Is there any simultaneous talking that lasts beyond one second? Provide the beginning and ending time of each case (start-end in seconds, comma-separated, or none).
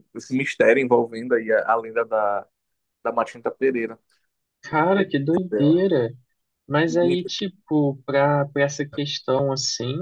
none